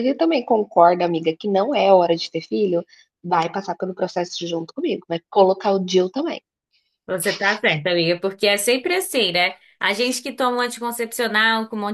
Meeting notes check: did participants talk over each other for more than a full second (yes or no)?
no